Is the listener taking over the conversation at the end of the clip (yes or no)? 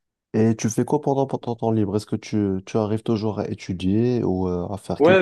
yes